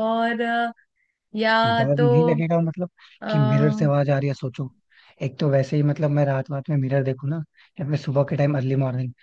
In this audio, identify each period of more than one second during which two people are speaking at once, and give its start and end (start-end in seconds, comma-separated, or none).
none